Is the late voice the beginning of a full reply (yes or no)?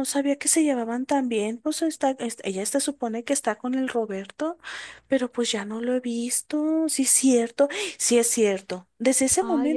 no